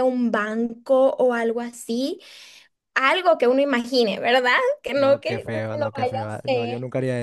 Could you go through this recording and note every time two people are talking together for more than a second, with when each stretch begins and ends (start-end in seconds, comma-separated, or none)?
5.0-6.7